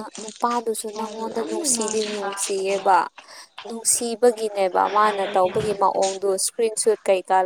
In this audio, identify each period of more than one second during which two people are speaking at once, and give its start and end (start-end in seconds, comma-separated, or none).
0.8-2.9